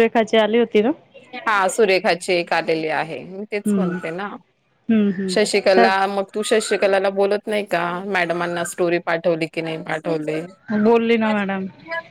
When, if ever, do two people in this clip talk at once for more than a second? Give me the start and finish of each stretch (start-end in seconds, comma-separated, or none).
none